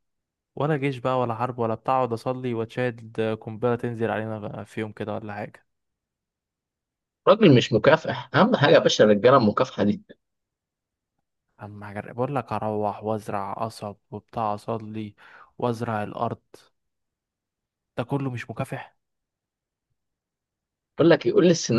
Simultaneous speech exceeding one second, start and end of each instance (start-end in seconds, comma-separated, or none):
none